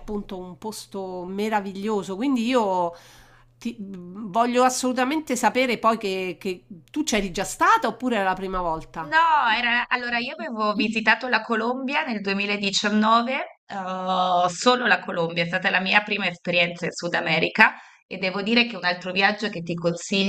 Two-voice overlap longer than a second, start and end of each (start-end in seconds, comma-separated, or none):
none